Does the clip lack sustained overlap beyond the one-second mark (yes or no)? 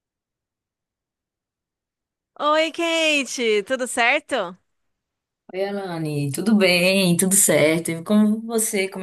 yes